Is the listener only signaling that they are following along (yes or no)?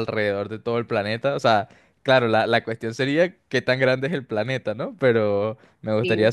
yes